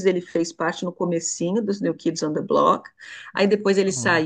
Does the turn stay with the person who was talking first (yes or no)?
yes